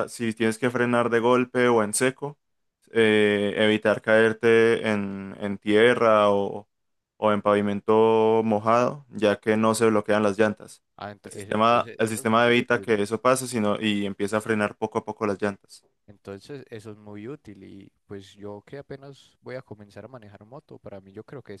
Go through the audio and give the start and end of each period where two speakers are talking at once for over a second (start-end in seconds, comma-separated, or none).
11.2-13.0